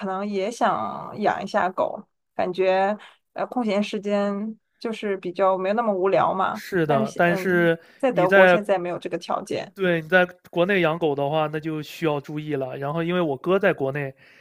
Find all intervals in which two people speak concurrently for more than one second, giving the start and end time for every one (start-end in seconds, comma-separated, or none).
6.5-8.6